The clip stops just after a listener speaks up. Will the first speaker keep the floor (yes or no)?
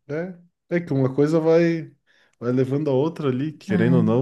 yes